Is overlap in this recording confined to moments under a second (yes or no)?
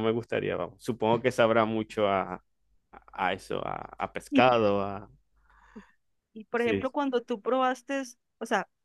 yes